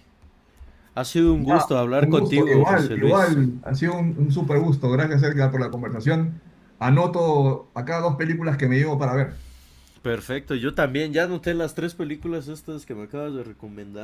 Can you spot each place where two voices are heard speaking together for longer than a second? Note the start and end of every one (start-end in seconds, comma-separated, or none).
1.4-3.4